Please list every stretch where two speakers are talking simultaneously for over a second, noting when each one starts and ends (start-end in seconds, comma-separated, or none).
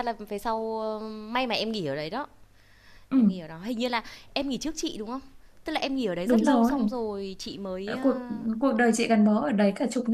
none